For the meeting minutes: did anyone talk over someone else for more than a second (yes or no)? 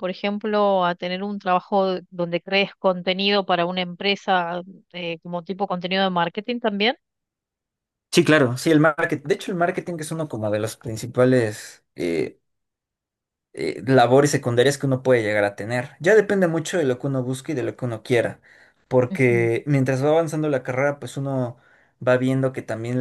no